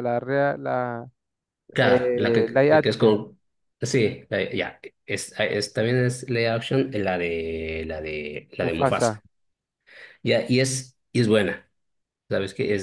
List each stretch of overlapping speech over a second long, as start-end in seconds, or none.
1.8-3.2